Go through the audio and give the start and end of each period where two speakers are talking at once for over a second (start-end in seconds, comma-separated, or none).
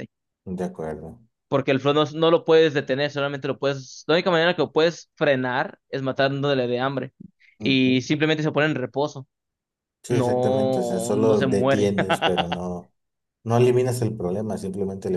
10.1-11.9